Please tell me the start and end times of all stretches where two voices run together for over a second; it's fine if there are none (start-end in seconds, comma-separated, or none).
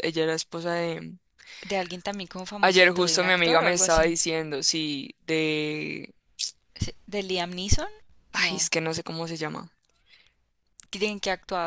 2.6-4.2